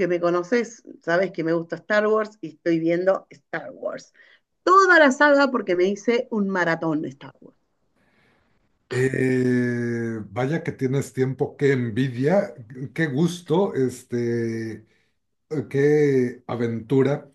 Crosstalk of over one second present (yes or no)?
no